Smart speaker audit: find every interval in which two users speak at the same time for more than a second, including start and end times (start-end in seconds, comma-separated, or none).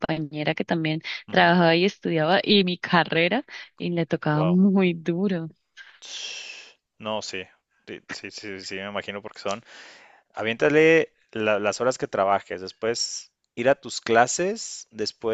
none